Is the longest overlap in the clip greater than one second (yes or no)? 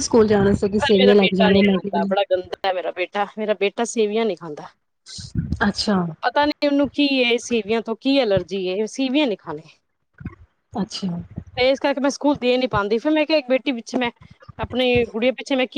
yes